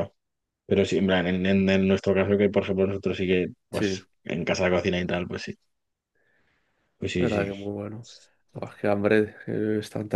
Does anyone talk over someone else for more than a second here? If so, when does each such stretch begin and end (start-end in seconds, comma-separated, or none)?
none